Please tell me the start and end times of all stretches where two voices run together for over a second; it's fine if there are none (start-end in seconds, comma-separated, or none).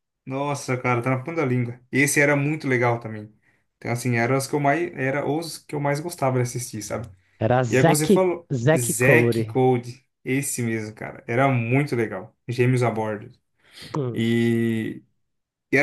7.7-9.6